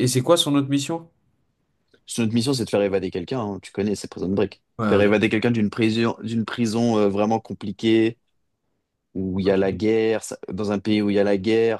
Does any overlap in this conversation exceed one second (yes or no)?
no